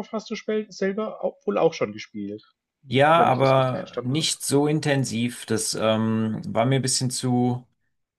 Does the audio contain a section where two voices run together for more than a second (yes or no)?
yes